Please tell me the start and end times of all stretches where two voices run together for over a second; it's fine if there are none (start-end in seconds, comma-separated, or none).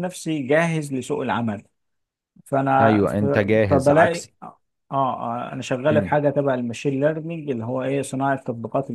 2.8-4.3